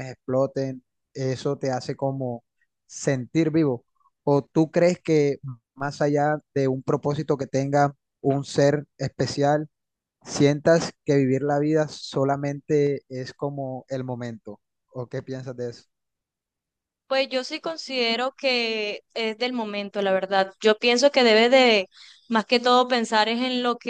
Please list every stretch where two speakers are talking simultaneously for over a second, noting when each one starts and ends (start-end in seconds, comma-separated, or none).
none